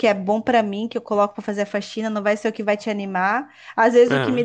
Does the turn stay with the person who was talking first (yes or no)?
yes